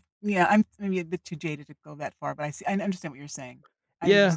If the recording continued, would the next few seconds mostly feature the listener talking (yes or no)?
yes